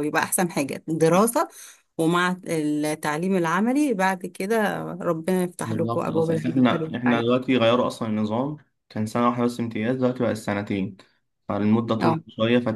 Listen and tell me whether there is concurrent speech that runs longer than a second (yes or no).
yes